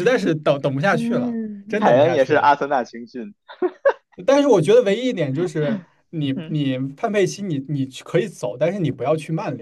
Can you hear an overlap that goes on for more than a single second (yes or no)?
yes